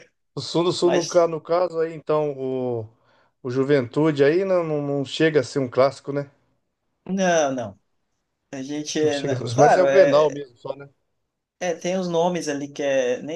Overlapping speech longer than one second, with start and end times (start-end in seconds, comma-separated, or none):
9.0-10.4